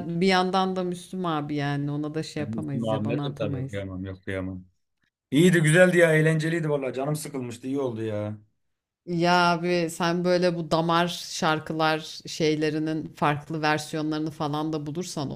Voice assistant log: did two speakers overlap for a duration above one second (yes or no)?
yes